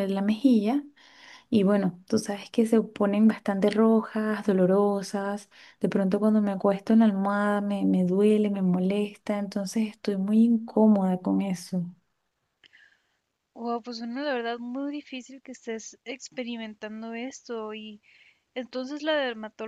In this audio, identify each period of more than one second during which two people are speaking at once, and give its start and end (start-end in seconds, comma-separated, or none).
none